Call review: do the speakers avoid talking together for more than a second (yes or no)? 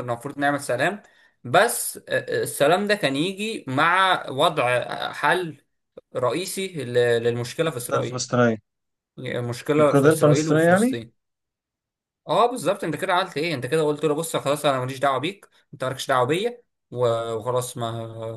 no